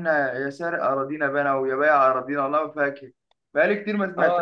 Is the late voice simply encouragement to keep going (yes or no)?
no